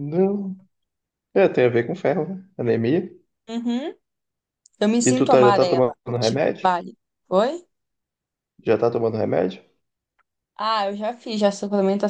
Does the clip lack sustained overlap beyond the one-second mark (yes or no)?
no